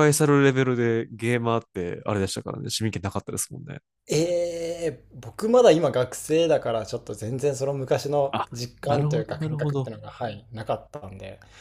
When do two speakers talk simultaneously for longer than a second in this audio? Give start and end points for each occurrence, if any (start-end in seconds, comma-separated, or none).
8.3-9.9